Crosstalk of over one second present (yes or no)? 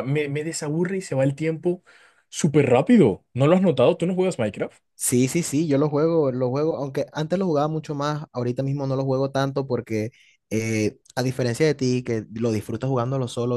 no